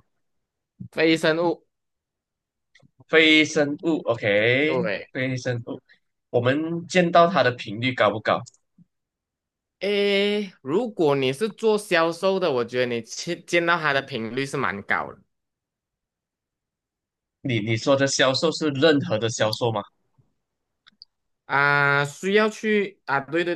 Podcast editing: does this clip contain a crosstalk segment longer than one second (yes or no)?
no